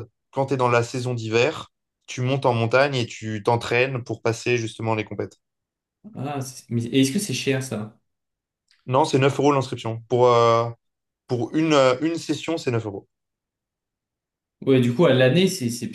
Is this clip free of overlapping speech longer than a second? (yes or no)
yes